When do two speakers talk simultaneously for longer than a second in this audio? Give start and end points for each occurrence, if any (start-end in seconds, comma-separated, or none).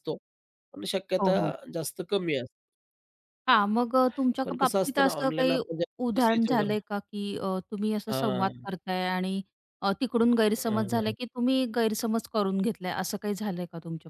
4.4-6.7